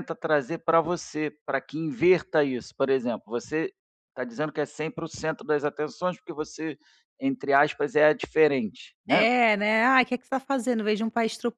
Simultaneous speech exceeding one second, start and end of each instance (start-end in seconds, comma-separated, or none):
none